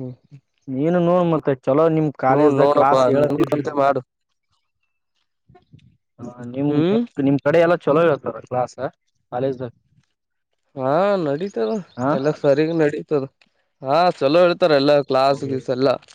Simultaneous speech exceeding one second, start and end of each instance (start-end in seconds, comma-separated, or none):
2.3-3.6